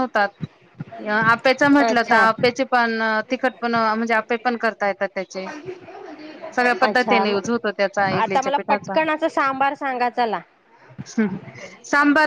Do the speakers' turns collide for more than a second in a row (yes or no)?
yes